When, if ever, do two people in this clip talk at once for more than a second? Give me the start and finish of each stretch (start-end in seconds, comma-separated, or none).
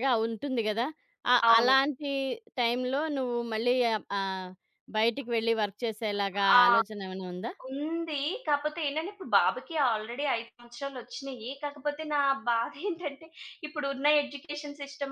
none